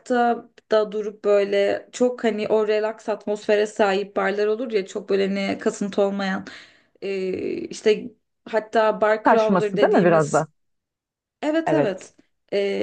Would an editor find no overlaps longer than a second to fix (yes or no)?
no